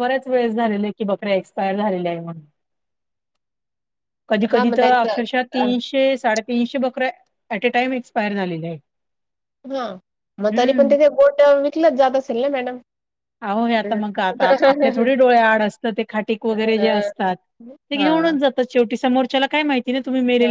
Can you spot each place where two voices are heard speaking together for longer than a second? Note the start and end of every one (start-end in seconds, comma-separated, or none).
4.5-5.8